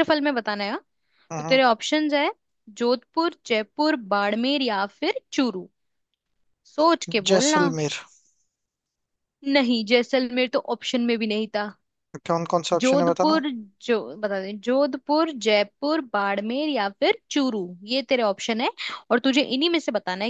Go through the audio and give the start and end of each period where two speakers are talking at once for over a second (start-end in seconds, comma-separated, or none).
none